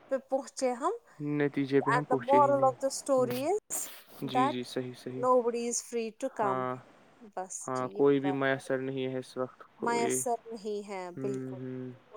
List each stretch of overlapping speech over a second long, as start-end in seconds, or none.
2.3-3.6